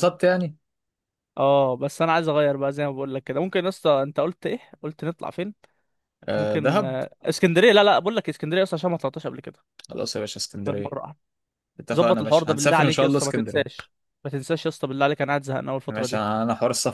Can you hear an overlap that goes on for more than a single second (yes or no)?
yes